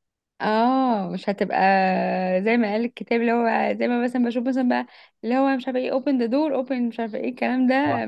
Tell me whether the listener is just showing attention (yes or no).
no